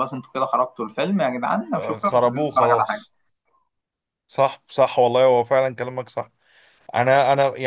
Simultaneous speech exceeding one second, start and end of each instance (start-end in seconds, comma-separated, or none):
1.7-3.0